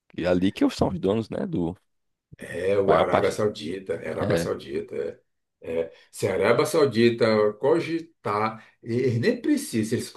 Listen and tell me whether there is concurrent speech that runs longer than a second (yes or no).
no